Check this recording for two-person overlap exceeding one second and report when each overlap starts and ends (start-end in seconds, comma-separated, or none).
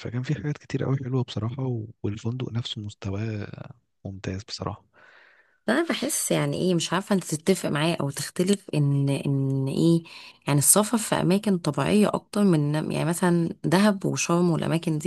none